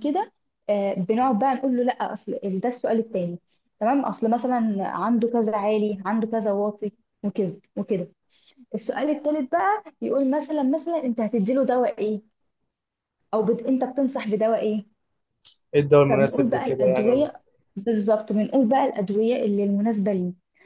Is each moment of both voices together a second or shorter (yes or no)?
no